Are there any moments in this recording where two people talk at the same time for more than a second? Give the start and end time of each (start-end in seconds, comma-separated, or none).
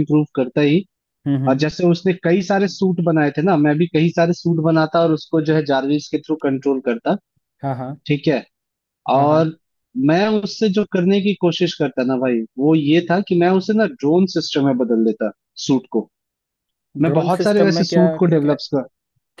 17.0-18.5